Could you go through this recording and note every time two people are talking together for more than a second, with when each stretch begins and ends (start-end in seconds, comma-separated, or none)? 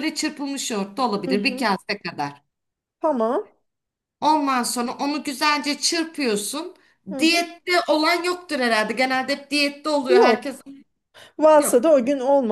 none